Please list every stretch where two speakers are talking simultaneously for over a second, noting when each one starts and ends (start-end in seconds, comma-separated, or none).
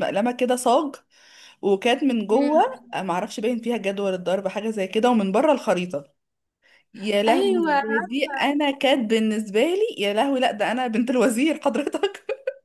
7.3-8.6